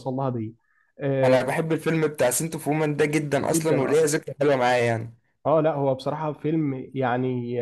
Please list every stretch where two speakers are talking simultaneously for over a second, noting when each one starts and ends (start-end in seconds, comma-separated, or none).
none